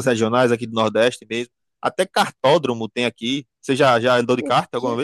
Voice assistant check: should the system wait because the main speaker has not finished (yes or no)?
no